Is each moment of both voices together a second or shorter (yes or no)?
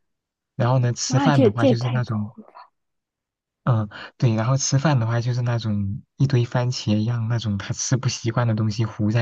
no